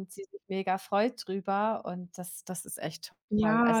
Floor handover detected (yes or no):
yes